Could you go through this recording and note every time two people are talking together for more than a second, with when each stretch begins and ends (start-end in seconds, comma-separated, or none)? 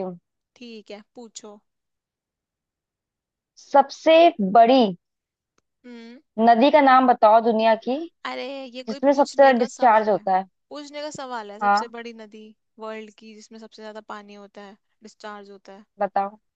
8.9-10.2